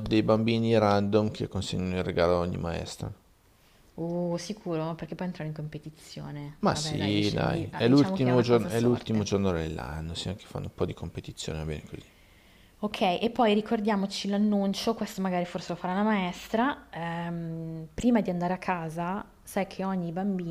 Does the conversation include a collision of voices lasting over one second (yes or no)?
yes